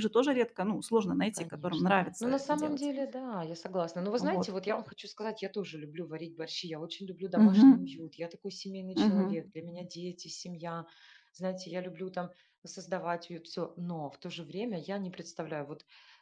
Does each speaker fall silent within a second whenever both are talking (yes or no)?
no